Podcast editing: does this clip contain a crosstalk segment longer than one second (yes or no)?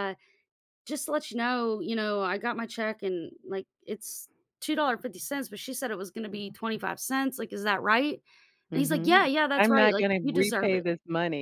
yes